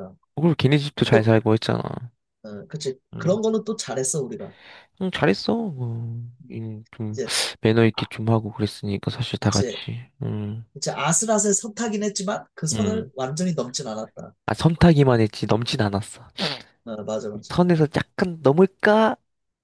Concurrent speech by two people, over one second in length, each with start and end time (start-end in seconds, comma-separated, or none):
none